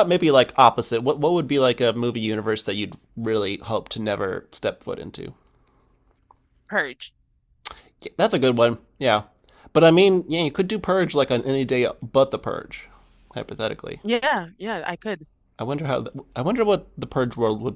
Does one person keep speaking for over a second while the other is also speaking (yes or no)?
no